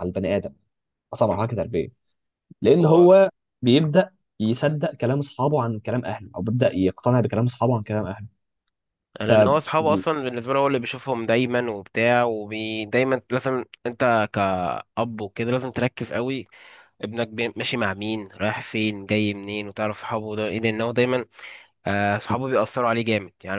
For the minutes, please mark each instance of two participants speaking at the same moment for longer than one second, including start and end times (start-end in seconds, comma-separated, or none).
none